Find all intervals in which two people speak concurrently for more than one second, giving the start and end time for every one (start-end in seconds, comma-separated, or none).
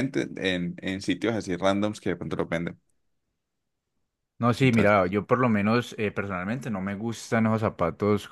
none